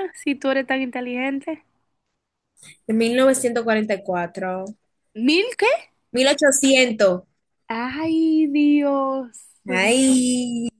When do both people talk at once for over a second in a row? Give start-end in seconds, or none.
none